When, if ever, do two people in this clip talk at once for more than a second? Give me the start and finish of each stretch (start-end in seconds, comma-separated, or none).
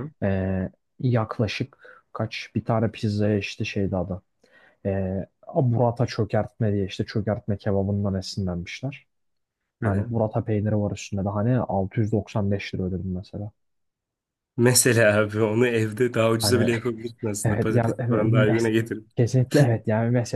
17.4-18.7